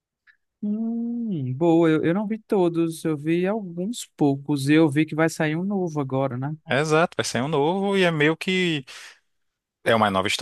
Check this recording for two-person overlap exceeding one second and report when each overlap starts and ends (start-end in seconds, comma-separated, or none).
none